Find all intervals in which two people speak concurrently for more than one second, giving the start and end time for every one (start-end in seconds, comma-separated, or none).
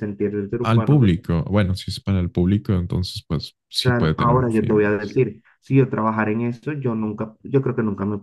3.8-5.2